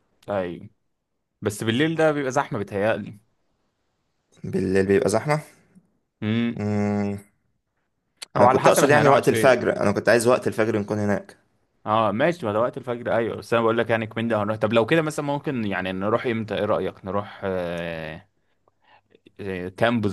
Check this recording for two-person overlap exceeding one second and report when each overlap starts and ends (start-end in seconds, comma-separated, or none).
8.4-9.7